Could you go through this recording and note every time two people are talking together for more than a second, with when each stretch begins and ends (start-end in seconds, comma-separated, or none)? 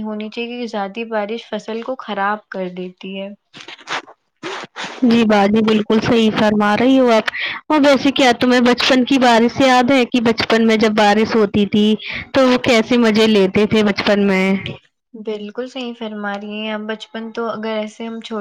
none